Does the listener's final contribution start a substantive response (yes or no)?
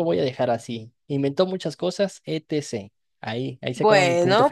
yes